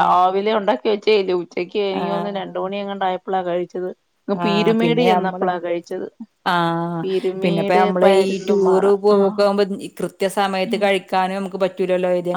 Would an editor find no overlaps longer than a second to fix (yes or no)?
no